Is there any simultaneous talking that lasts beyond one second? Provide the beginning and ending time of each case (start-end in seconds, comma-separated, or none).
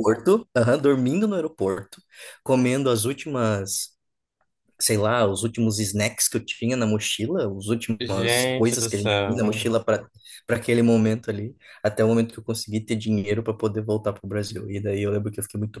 8.0-9.7